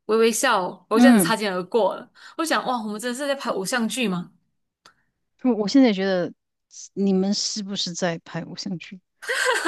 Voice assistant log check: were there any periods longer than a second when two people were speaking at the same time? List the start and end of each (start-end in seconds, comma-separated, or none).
none